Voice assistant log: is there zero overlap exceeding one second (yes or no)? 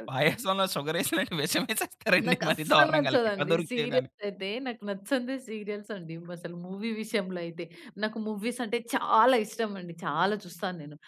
no